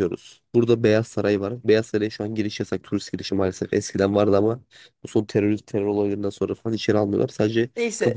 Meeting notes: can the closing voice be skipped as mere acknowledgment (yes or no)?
no